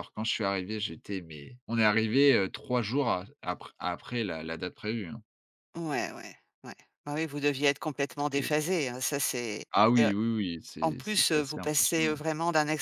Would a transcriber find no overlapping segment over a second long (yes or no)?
no